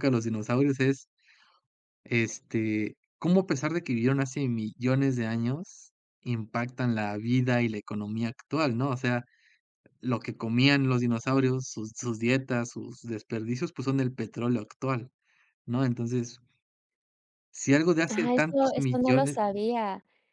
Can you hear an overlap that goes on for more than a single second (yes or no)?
yes